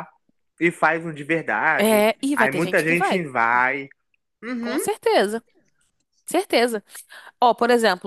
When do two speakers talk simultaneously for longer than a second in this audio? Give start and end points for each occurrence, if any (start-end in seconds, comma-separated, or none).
1.8-3.2